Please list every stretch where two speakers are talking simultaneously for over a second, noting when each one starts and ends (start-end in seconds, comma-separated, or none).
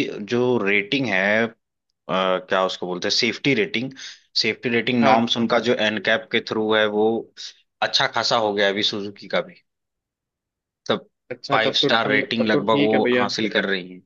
11.5-13.3